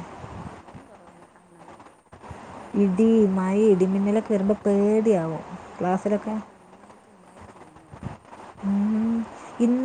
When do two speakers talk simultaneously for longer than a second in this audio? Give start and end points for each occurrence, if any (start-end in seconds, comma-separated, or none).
2.8-4.8